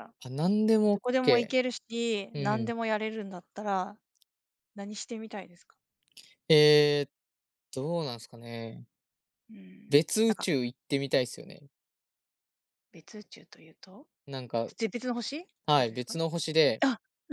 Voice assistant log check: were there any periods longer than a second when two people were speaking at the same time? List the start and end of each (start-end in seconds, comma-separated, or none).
0.9-2.7